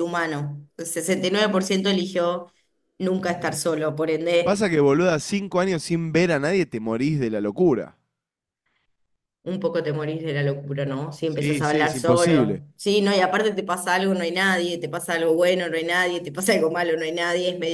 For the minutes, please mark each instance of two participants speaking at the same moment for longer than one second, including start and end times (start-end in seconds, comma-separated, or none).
11.2-12.6